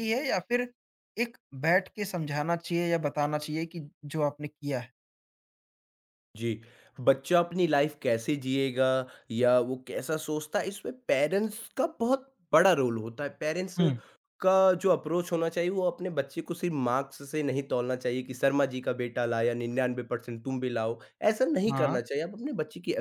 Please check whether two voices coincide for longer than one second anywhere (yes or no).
no